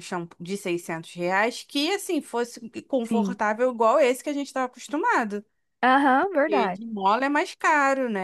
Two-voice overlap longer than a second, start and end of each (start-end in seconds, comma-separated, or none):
none